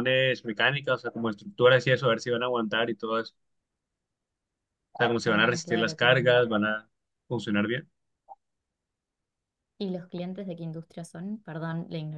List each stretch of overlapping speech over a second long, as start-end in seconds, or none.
5.2-6.5